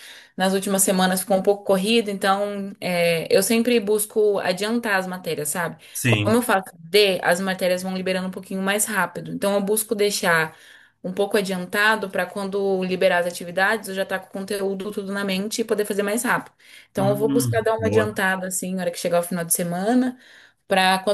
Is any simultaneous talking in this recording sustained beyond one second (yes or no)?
yes